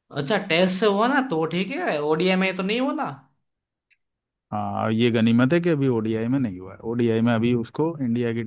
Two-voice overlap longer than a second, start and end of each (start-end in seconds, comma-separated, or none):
none